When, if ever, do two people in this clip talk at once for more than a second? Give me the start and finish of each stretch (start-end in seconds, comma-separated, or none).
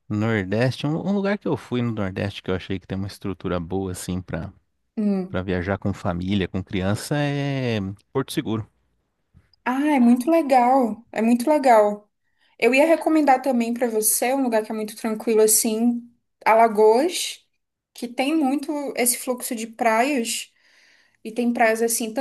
none